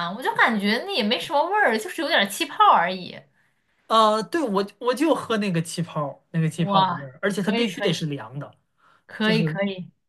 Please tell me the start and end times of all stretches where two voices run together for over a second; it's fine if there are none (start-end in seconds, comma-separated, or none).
6.6-8.1